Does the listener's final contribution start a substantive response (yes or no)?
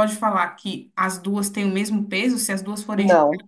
no